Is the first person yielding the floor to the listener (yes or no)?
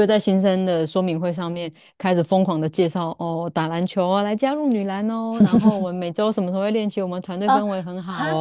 yes